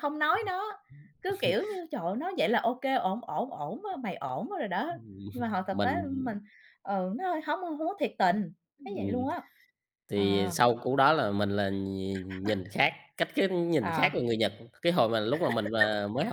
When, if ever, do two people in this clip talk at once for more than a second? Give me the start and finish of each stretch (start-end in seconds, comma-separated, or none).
none